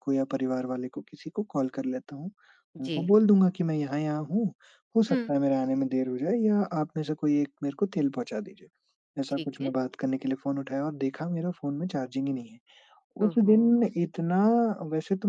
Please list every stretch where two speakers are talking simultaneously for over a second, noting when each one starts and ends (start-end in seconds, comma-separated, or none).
none